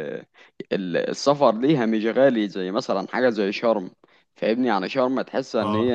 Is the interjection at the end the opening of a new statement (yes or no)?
no